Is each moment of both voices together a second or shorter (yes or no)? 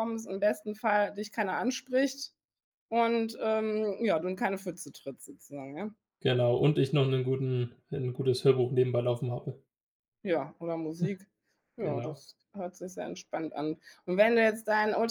yes